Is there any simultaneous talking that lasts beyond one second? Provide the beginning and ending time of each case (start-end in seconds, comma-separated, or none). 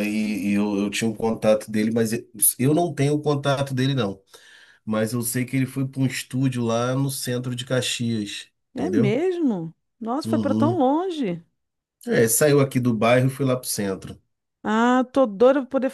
none